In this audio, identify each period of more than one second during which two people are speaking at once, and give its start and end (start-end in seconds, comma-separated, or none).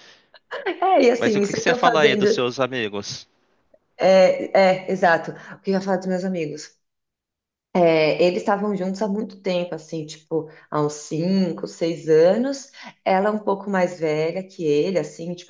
1.2-2.4